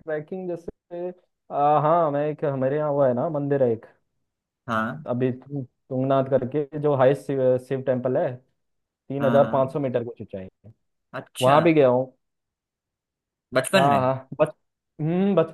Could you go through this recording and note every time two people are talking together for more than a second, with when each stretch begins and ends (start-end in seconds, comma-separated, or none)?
none